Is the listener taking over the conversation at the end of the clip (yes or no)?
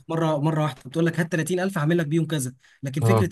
no